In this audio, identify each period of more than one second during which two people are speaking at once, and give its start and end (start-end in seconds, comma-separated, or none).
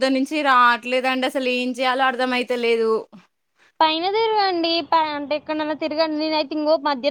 none